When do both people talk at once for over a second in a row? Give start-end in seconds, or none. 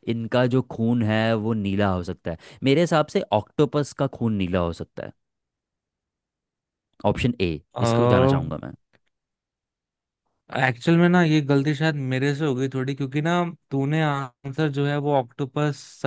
none